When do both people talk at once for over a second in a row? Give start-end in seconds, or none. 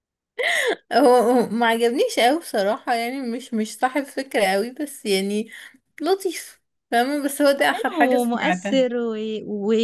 7.4-8.8